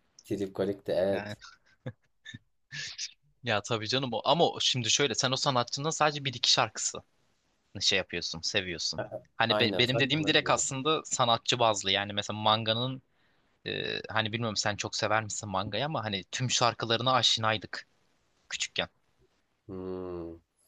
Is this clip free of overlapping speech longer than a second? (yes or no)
no